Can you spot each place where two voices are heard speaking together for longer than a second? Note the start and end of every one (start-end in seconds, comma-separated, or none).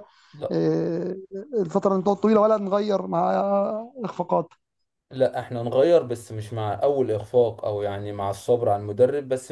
none